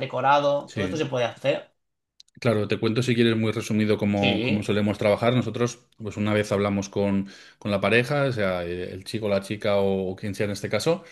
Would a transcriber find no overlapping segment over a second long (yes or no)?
yes